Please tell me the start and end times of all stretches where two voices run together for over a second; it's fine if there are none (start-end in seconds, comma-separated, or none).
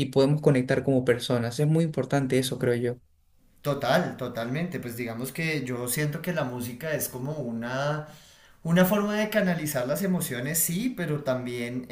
none